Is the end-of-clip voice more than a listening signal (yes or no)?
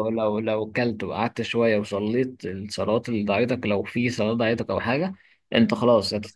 no